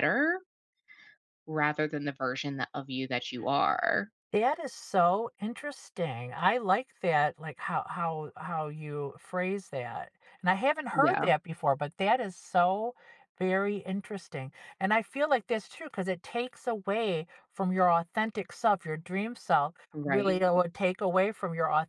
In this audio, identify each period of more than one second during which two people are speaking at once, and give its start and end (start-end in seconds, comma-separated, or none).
none